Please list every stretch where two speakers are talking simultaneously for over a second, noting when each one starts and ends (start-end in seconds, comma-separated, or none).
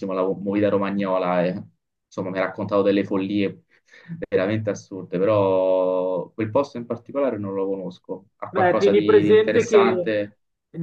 8.5-10.3